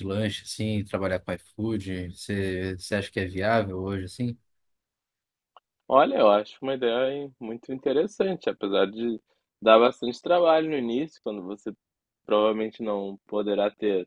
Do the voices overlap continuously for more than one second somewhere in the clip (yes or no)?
no